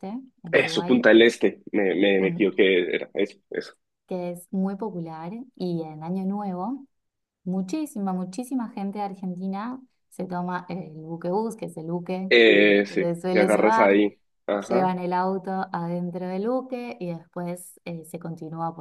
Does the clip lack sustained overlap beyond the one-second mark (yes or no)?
no